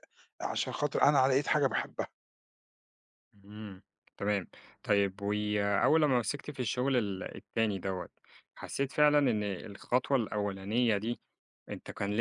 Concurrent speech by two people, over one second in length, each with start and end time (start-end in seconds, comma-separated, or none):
none